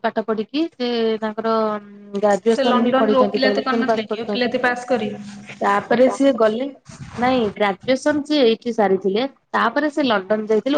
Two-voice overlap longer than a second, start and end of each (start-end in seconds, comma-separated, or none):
2.5-4.5